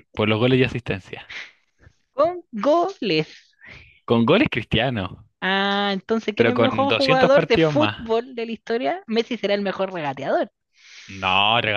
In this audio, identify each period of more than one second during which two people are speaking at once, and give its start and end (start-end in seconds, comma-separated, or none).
6.3-8.1